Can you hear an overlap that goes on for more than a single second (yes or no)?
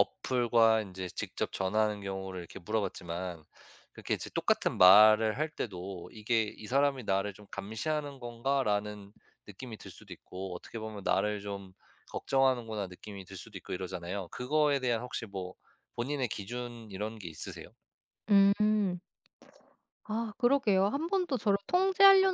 no